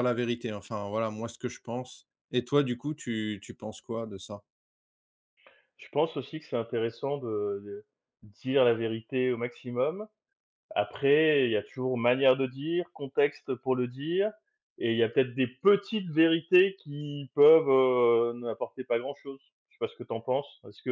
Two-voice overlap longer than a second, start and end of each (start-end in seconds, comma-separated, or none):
none